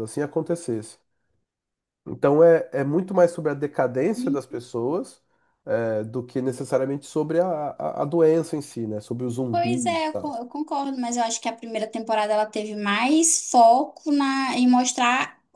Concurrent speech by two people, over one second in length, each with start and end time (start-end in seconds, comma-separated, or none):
none